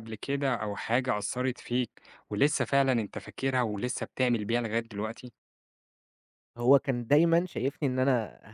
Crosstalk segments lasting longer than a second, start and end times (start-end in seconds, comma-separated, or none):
none